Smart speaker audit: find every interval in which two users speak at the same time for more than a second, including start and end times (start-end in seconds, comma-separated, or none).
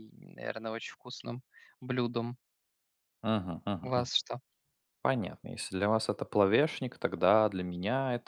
none